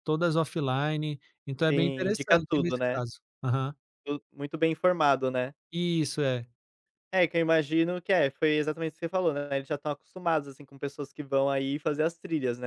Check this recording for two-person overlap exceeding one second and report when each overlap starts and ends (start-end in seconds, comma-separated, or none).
1.7-3.0